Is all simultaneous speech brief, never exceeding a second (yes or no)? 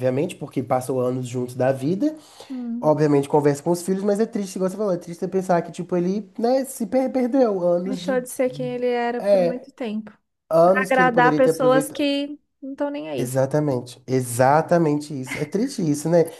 no